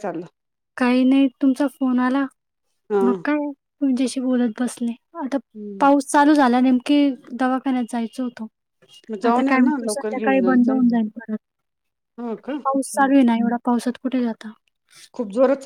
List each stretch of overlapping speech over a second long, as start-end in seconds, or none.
9.3-10.8